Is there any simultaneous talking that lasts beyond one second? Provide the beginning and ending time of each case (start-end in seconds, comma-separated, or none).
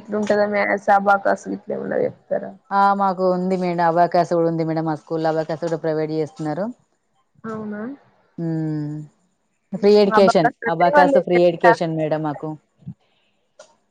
9.8-11.9